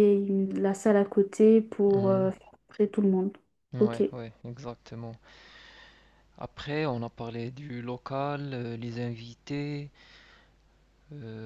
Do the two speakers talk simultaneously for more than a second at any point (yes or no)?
no